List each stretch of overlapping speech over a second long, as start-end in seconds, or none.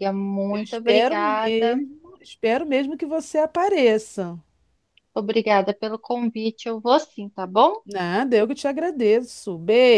0.5-1.8